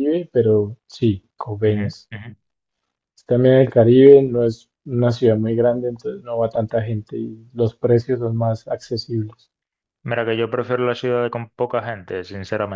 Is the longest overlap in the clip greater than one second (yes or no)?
no